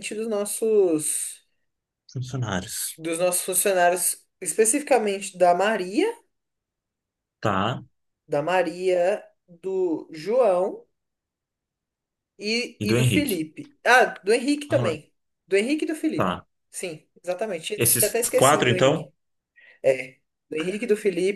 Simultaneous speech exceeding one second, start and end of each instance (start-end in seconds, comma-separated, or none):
17.8-19.1